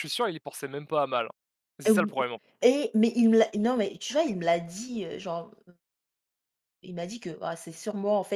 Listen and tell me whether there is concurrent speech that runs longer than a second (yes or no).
no